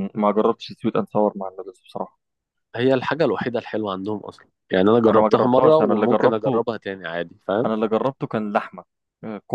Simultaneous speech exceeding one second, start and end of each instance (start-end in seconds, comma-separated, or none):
5.0-6.6